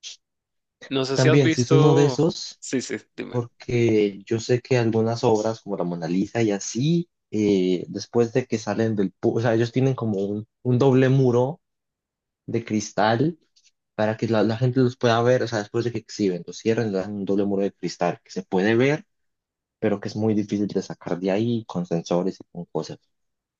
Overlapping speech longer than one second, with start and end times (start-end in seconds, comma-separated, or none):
1.1-2.6